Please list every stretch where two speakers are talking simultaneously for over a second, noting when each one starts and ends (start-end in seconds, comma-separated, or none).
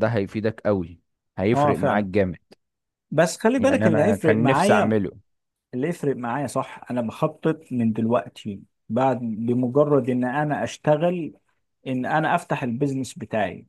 3.6-5.0